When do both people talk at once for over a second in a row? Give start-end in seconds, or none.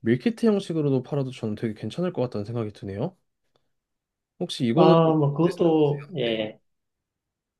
4.7-6.4